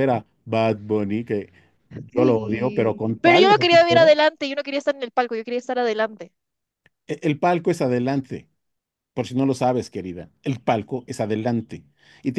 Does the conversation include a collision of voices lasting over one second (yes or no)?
yes